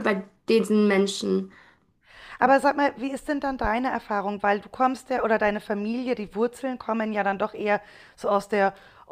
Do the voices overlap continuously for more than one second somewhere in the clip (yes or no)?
no